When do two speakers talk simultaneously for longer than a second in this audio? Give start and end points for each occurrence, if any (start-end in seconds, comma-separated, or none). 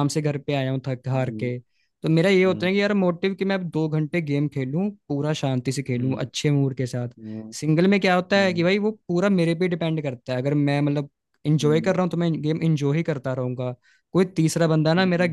none